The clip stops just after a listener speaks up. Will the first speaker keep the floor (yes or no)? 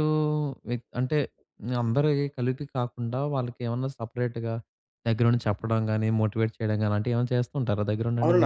no